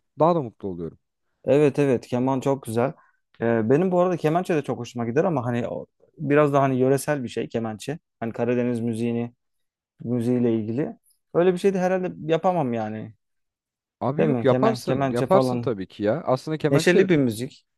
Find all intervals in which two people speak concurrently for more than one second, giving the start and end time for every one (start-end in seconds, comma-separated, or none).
14.2-15.7